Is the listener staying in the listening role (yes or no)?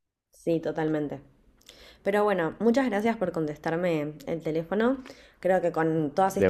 yes